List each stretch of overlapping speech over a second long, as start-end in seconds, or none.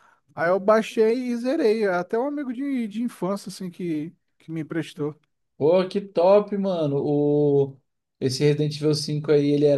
none